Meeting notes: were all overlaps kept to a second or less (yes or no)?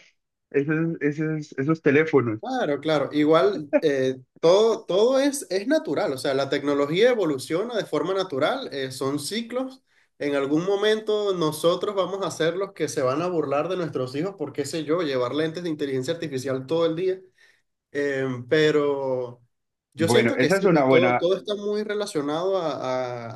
no